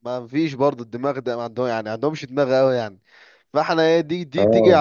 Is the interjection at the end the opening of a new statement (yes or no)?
no